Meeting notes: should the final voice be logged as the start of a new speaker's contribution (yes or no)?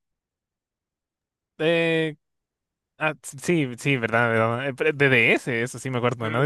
yes